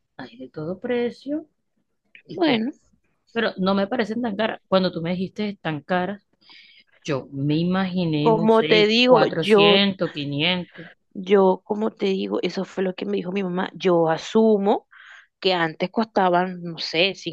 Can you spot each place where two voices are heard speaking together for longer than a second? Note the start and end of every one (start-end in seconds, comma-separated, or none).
8.2-9.8